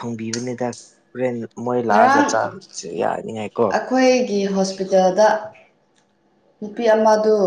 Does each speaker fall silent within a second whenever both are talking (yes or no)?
yes